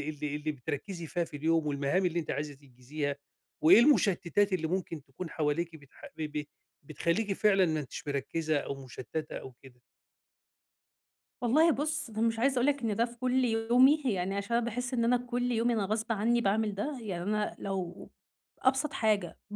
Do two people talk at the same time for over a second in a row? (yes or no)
no